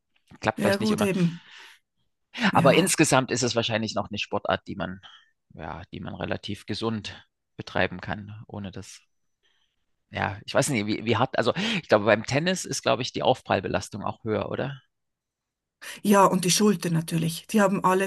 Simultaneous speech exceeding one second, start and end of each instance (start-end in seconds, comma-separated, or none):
none